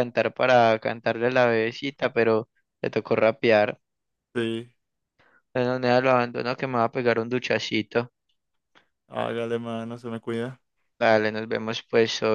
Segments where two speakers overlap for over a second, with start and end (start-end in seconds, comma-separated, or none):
none